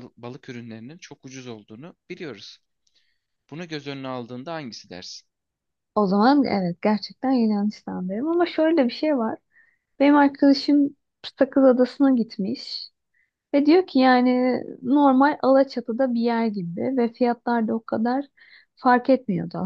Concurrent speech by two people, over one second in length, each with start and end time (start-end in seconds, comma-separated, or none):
none